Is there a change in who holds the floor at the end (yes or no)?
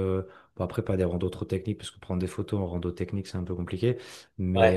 no